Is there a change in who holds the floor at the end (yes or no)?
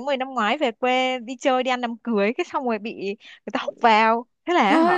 no